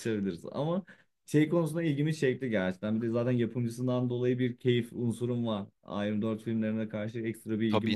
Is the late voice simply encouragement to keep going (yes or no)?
no